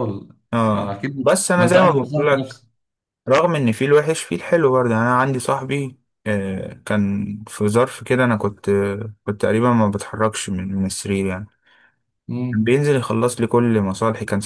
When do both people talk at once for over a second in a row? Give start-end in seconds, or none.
0.8-2.6